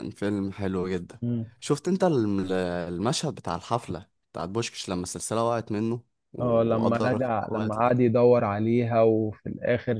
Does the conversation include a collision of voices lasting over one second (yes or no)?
yes